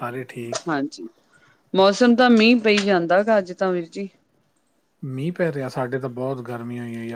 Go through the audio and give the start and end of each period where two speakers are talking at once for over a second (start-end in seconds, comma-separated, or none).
none